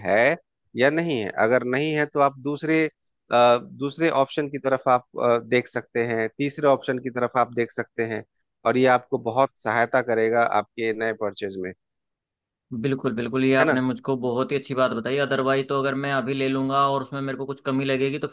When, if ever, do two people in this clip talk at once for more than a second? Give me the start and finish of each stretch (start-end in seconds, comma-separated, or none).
none